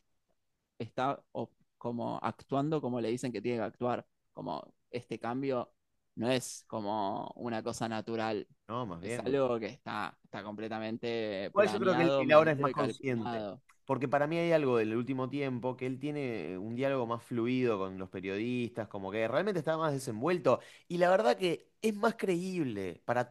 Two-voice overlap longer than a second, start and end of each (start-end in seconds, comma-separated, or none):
11.5-13.5